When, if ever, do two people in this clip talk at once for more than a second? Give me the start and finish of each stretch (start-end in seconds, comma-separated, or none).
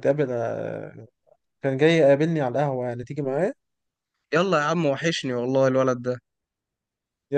none